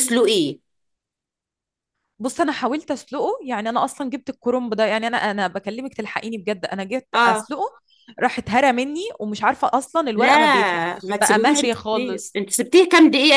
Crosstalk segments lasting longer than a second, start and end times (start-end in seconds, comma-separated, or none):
11.0-12.4